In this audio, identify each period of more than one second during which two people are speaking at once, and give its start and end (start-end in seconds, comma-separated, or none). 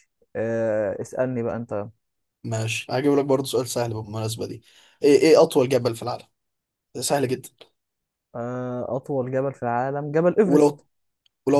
none